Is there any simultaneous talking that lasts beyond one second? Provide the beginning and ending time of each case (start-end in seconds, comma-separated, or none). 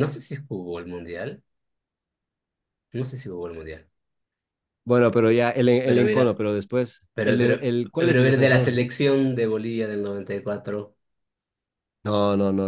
7.1-8.8